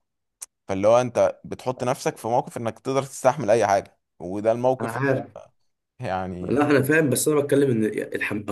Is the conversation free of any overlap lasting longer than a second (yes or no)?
yes